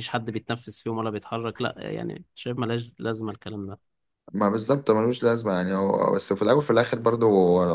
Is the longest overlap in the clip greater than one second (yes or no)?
no